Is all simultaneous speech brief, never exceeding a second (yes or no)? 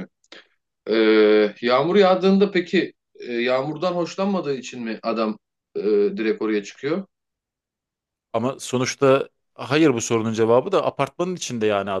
yes